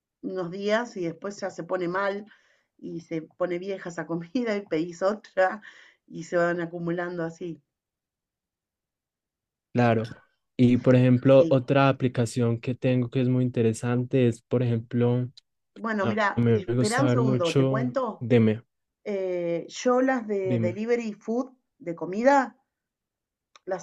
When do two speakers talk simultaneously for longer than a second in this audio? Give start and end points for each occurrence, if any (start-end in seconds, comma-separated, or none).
16.0-18.3